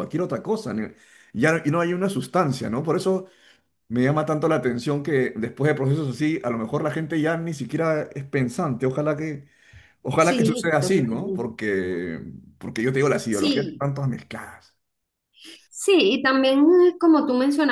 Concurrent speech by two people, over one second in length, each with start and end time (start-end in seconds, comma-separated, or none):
10.2-11.5